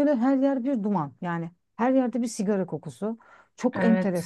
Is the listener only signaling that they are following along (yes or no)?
yes